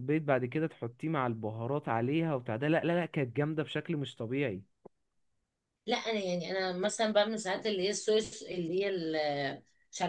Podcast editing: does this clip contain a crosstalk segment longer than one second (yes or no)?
no